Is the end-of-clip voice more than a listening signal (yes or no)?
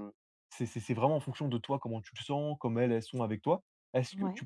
no